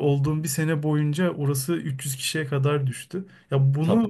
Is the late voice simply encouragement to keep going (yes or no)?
yes